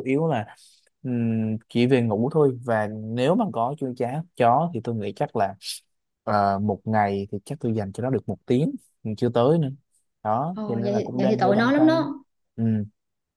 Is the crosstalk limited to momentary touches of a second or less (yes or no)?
no